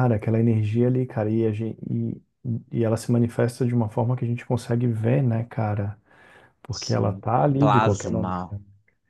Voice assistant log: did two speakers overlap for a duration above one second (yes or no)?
yes